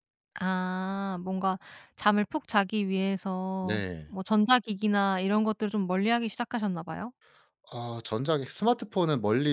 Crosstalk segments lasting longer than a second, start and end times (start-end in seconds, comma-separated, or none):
none